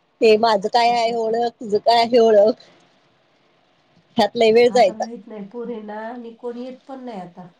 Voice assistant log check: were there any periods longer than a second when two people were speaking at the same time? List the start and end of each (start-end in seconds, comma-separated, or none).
none